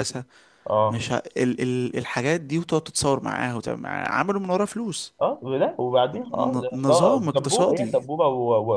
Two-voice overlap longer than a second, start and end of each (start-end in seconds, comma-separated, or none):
6.3-8.0